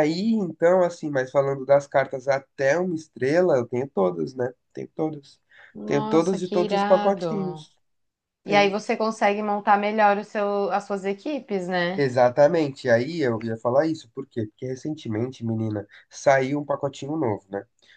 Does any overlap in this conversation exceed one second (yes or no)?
yes